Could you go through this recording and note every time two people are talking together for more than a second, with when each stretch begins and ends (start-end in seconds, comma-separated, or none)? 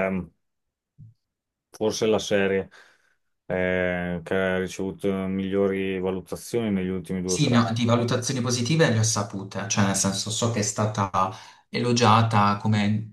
none